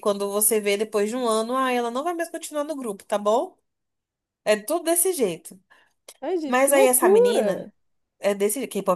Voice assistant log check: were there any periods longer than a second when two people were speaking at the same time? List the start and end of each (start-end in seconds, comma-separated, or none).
6.5-7.7